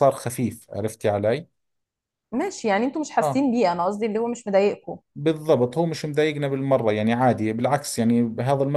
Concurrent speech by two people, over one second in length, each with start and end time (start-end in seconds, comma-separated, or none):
none